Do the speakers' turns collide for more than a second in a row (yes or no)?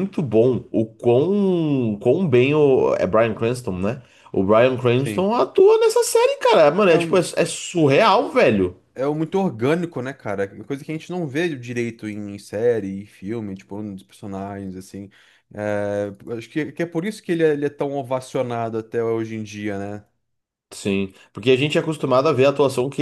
no